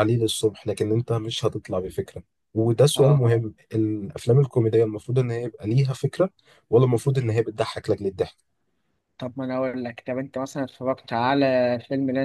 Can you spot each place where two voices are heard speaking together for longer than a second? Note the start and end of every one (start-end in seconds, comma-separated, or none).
none